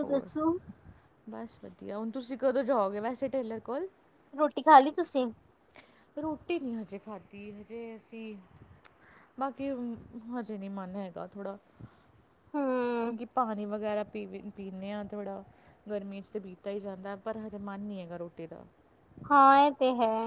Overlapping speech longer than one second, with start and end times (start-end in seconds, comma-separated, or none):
none